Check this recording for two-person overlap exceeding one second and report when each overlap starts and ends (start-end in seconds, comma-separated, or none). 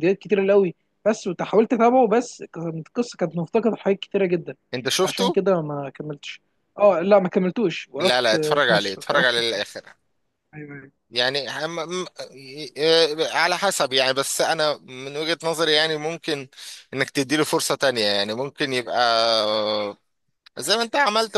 8.0-9.7